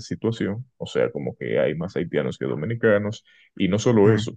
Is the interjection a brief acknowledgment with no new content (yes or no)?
yes